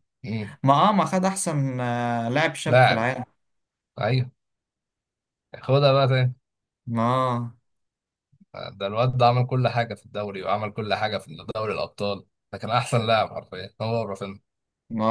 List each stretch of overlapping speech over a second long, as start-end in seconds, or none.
none